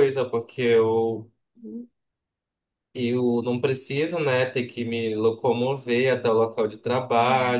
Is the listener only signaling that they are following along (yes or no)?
yes